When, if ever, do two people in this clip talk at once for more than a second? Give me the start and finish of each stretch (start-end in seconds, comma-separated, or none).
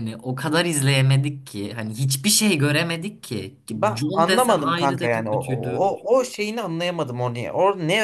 3.9-5.8